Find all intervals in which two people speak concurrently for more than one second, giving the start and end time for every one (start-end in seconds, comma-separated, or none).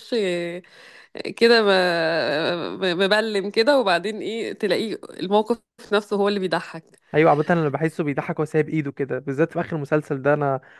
none